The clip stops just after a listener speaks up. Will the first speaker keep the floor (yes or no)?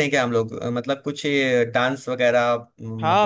no